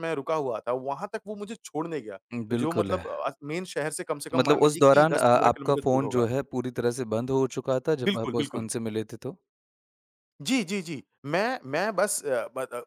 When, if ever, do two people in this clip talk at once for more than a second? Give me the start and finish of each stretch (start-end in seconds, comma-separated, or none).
4.3-6.2